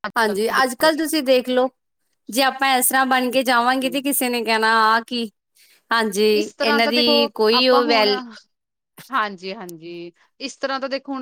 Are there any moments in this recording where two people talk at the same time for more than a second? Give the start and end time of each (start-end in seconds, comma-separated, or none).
none